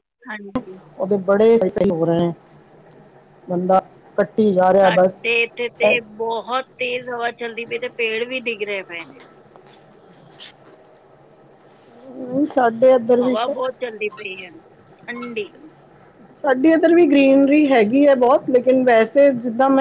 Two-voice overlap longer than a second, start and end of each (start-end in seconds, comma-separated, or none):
none